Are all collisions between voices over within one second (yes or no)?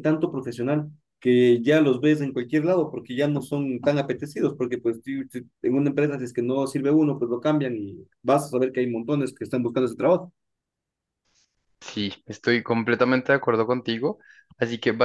yes